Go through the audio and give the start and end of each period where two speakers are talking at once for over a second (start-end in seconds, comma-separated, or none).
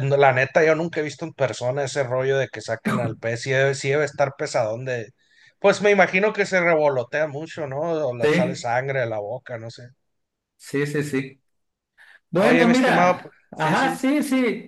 12.3-14.0